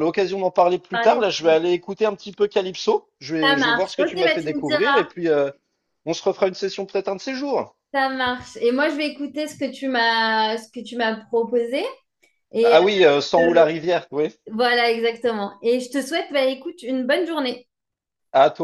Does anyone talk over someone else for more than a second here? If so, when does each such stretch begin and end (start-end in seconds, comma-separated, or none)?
3.4-4.7